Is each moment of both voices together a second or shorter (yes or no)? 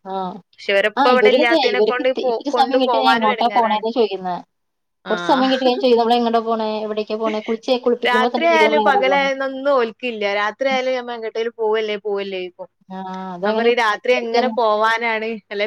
no